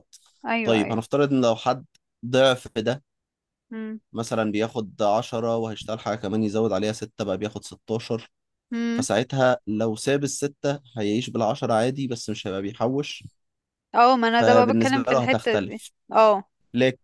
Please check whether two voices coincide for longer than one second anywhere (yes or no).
yes